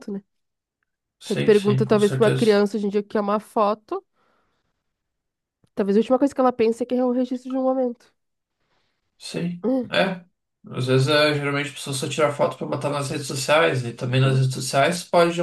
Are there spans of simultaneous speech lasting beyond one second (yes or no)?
yes